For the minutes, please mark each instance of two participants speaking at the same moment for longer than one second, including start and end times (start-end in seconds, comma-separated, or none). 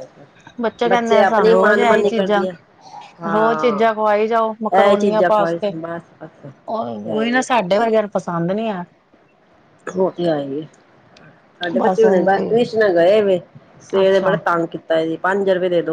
0.9-2.5